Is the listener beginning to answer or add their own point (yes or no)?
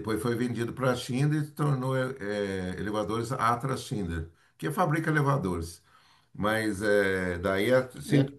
no